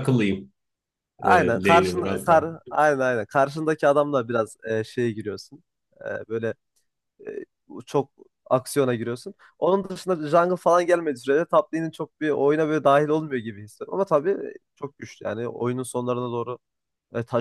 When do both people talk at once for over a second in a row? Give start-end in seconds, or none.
1.2-2.5